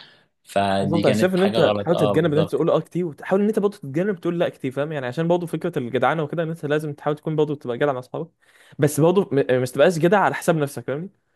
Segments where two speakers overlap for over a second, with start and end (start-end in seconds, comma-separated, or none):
0.8-2.6